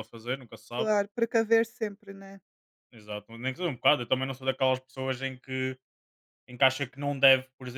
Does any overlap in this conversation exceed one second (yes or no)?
no